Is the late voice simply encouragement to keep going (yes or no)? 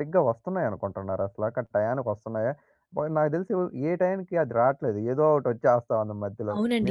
no